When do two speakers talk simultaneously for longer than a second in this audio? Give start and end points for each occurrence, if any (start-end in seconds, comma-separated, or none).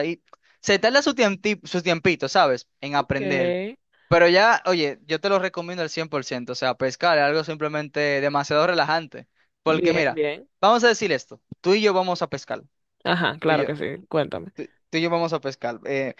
none